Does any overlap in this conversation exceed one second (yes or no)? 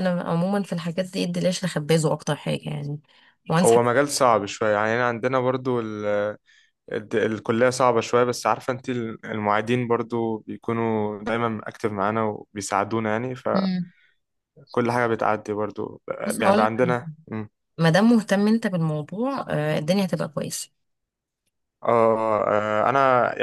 no